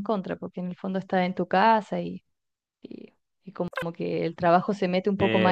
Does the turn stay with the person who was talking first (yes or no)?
no